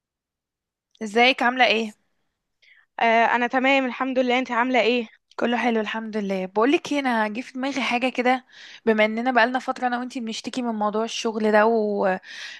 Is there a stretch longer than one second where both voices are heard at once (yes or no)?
no